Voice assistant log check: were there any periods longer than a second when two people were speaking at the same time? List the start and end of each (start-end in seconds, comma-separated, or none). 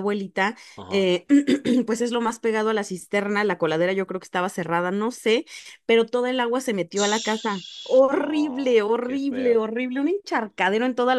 6.9-9.6